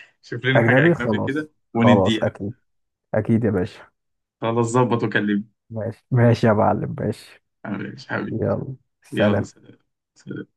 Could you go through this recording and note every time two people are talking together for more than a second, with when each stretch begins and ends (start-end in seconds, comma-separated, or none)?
0.6-2.4